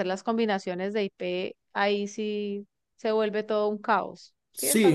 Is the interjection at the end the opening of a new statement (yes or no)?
yes